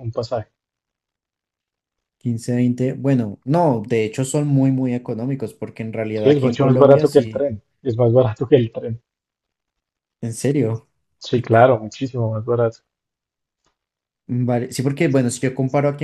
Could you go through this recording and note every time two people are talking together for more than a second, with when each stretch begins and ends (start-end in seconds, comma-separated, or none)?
6.2-7.5